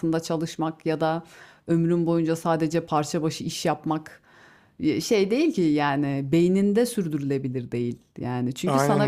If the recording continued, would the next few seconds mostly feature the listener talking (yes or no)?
no